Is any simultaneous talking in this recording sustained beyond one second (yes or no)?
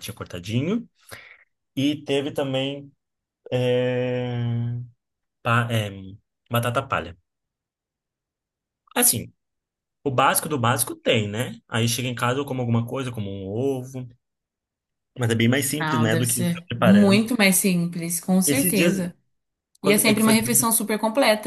yes